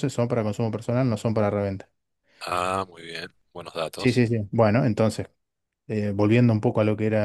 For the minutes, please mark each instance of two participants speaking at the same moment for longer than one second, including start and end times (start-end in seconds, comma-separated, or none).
none